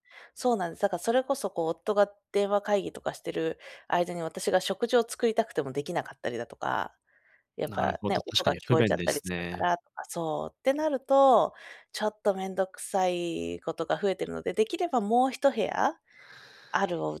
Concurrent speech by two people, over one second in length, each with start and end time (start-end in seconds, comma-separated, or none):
7.7-9.6